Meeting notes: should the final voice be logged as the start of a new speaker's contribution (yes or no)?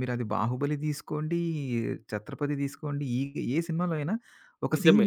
no